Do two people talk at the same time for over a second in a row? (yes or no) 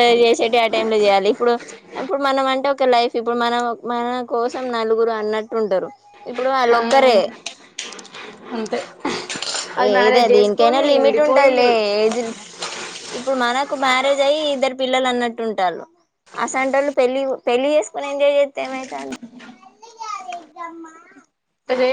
yes